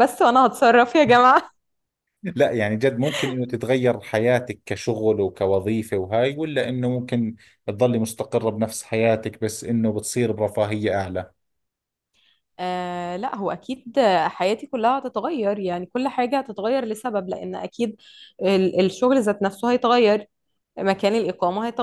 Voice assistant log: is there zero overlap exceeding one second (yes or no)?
yes